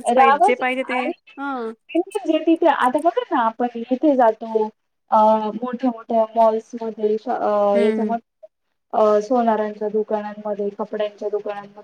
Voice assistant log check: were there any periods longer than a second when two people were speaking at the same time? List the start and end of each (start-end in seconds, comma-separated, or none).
none